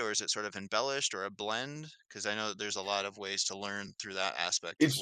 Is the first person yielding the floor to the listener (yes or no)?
yes